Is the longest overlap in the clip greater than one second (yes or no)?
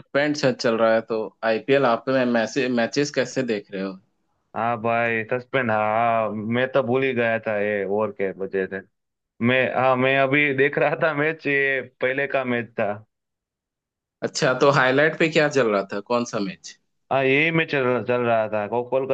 no